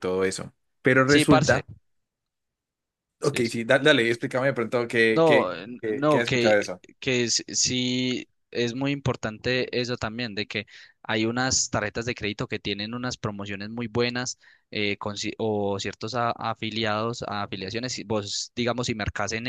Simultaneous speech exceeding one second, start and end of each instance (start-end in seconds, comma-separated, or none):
5.1-6.6